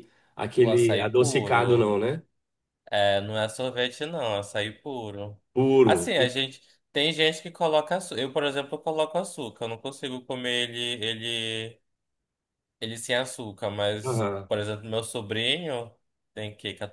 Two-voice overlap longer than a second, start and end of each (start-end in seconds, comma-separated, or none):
0.6-1.9